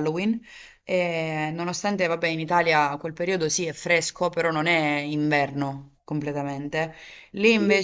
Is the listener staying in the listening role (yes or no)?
yes